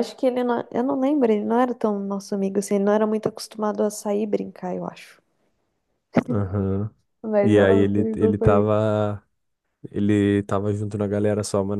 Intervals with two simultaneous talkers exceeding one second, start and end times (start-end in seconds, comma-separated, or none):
7.4-8.8